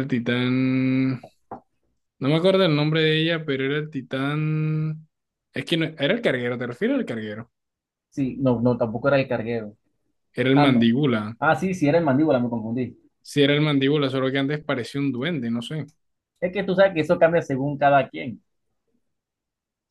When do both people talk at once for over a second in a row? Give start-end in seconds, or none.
none